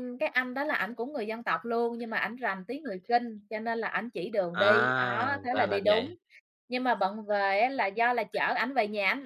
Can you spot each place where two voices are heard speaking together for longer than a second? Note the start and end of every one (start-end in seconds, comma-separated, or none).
4.5-6.0